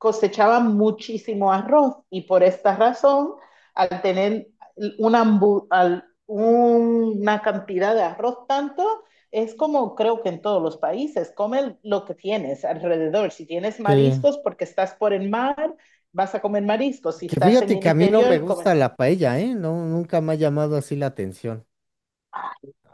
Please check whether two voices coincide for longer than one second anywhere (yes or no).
yes